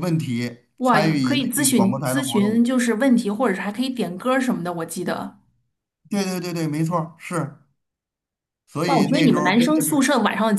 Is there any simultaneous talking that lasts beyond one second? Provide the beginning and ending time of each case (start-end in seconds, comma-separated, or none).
0.8-2.6, 8.9-10.1